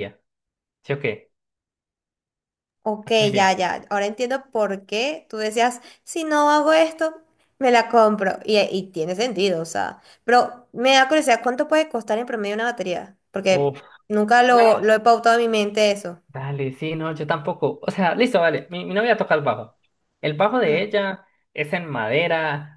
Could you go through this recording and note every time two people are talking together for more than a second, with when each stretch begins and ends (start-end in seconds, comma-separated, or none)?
none